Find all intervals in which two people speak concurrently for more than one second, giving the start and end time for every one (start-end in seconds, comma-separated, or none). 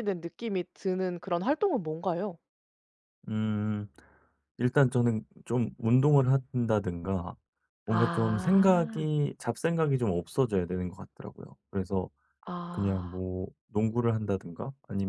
7.9-9.1